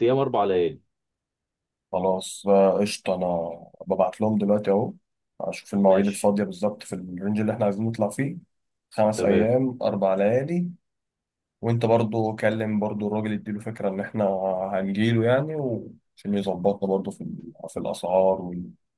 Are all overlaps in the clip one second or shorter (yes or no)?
yes